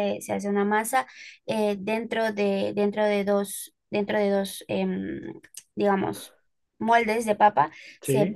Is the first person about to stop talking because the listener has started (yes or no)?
no